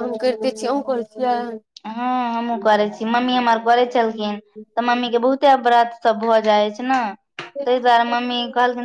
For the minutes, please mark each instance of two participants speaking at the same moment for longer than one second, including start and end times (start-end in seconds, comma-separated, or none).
none